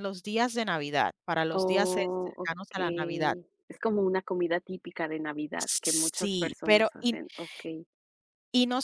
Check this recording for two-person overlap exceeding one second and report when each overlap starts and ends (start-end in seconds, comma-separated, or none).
1.5-3.4, 5.6-7.2